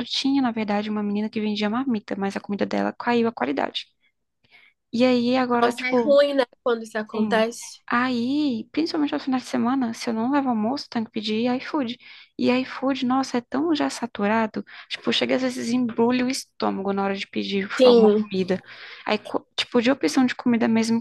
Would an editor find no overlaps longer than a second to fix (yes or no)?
yes